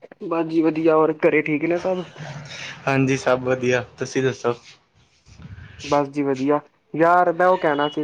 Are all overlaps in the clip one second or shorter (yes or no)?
yes